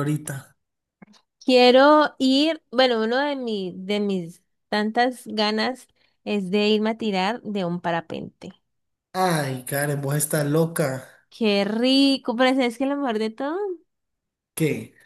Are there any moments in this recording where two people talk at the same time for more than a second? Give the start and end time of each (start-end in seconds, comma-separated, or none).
none